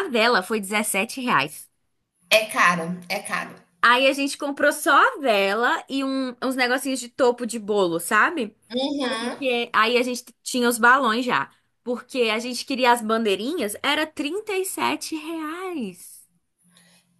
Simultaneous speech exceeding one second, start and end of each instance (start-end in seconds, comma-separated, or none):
none